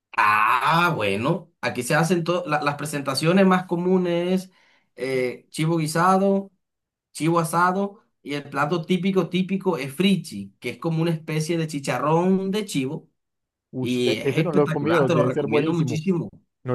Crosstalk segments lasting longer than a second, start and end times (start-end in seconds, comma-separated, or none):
13.8-16.0